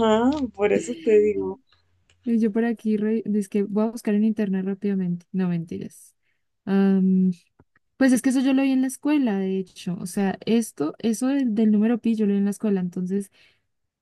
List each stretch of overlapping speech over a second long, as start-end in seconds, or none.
none